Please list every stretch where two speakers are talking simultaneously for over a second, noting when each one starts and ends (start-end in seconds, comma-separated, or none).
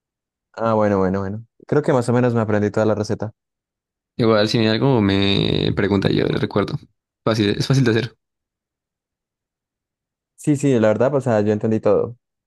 none